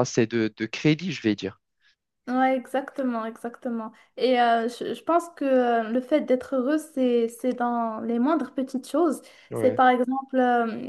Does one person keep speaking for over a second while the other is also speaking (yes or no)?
no